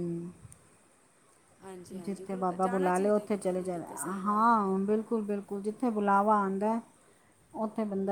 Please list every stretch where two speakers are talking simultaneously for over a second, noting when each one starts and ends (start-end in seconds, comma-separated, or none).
2.0-4.5